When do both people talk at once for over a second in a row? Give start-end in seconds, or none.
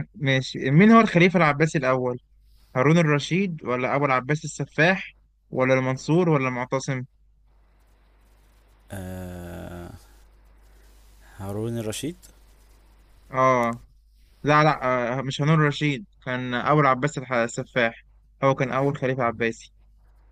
none